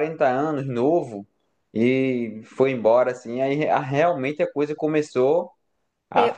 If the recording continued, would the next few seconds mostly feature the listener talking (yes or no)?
yes